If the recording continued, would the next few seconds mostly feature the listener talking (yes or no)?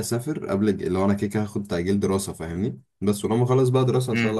no